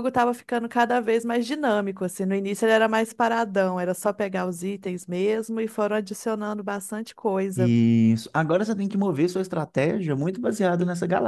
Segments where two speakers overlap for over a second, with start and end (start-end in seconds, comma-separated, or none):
none